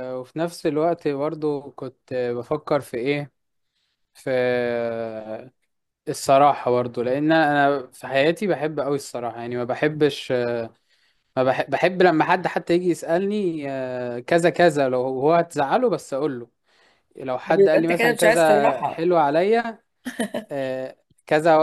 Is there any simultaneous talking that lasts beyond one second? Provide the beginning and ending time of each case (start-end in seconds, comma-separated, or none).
17.5-19.1